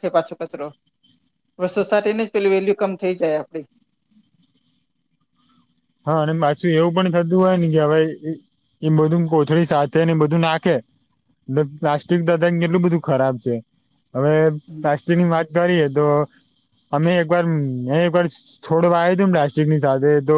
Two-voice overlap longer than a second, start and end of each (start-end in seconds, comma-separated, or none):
none